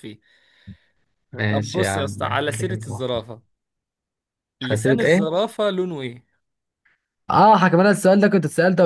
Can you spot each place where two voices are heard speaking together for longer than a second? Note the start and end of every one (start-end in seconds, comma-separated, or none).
1.5-3.1